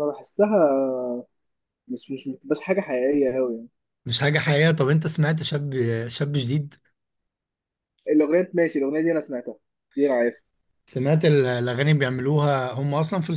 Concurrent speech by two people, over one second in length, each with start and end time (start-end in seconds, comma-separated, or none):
none